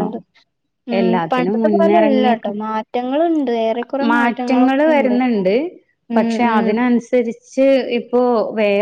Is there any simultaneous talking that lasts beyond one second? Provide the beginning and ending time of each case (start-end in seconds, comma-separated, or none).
1.0-2.5